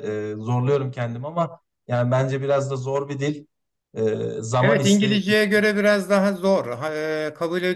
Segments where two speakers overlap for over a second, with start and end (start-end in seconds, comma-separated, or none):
4.6-5.8